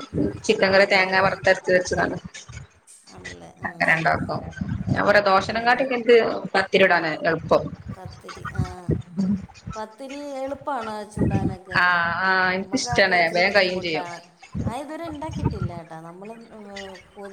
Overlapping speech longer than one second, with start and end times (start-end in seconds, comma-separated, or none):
12.6-14.1